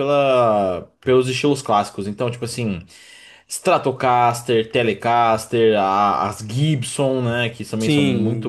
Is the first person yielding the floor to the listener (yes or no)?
yes